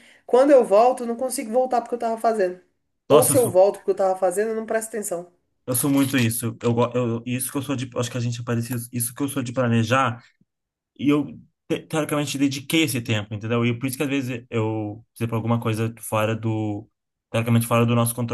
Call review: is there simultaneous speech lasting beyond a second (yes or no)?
no